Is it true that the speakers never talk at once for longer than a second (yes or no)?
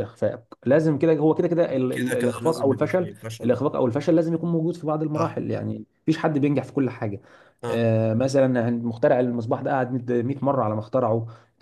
no